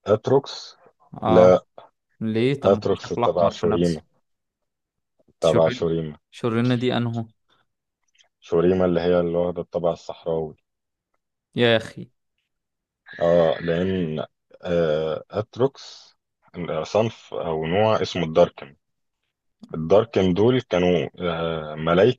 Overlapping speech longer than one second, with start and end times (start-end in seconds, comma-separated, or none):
2.6-4.0